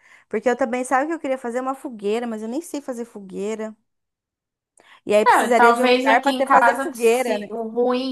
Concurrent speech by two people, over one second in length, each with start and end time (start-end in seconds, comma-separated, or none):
5.3-7.5